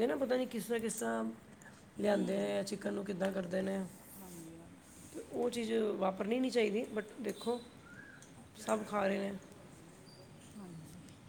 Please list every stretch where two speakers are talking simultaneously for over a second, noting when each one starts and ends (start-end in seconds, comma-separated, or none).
none